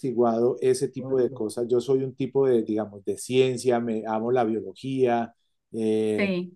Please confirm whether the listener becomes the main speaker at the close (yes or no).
no